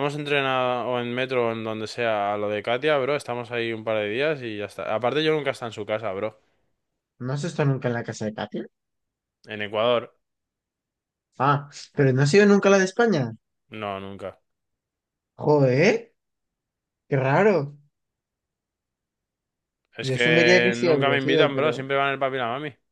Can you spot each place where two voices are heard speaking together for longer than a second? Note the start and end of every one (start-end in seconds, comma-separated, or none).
20.0-21.8